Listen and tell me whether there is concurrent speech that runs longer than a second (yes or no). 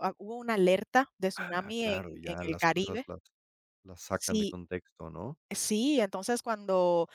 yes